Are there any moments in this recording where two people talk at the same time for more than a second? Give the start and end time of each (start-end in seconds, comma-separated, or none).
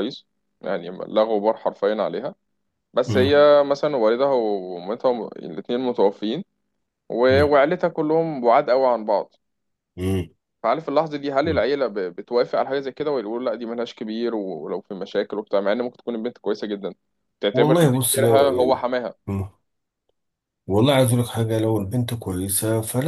17.5-18.9